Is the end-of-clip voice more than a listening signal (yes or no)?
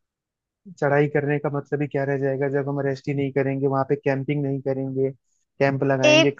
yes